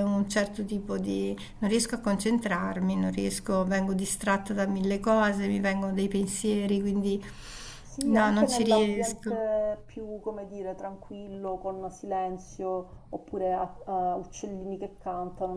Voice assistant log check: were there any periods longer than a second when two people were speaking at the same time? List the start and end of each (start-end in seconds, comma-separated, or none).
8.1-9.4